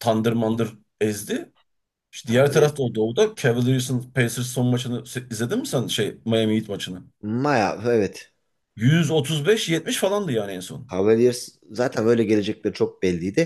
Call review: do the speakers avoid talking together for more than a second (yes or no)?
yes